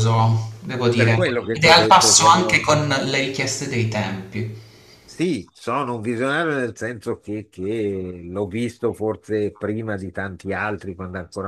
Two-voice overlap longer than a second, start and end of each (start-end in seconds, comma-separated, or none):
0.9-2.7